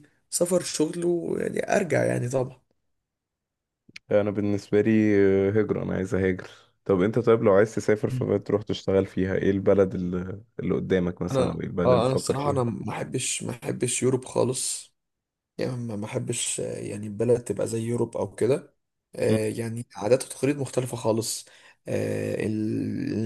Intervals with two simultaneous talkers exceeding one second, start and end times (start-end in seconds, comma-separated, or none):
11.3-12.6